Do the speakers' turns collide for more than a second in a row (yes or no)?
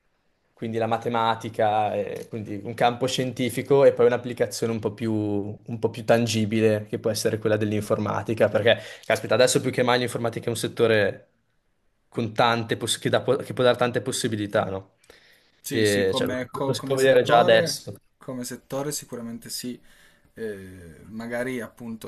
yes